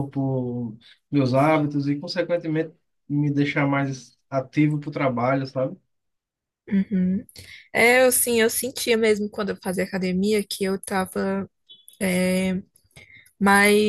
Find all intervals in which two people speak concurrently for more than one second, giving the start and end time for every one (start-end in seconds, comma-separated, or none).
none